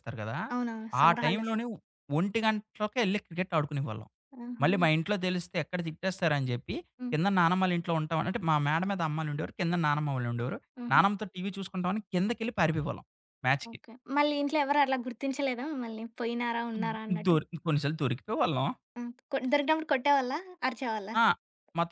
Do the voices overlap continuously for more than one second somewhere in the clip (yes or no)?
no